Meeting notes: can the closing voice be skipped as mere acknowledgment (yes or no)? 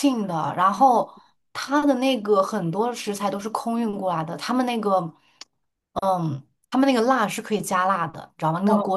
no